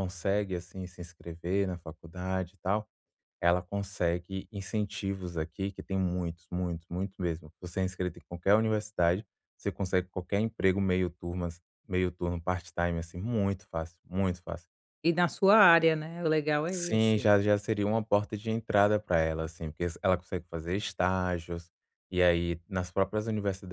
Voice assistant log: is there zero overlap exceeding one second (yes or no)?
yes